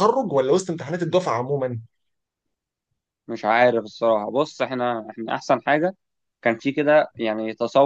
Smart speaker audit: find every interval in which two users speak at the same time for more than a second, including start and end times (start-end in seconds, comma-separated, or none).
none